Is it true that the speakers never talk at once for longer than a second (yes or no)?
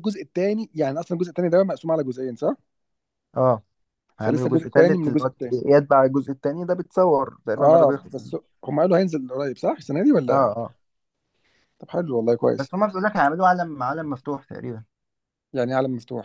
no